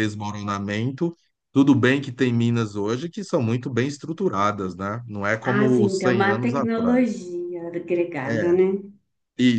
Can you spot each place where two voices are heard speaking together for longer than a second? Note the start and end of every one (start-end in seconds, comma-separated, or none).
5.4-7.2